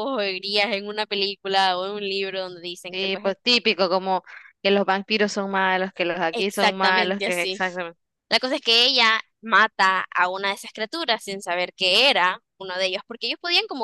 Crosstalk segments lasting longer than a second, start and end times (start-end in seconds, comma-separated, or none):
6.3-7.6